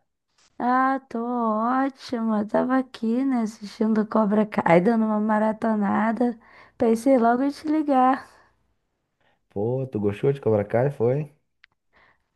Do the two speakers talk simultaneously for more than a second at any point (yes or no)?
no